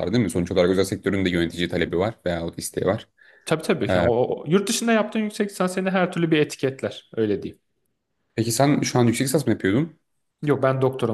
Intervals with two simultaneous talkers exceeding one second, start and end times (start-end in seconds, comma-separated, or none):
none